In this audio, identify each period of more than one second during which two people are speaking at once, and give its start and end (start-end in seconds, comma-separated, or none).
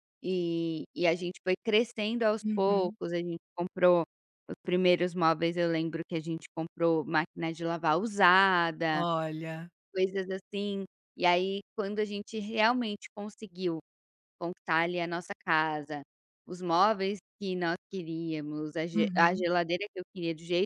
none